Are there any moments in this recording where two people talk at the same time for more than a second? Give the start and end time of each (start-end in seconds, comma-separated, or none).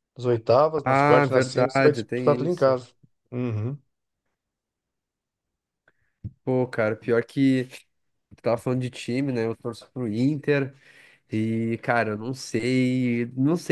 0.8-2.8